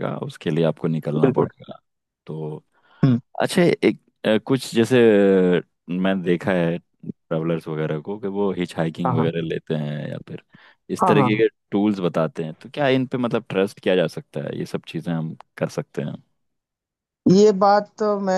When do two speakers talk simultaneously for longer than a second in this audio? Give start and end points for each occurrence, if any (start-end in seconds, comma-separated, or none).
none